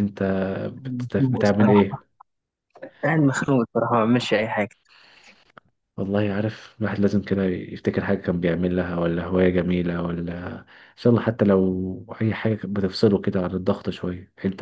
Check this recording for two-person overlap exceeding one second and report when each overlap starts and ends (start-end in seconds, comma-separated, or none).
0.8-2.0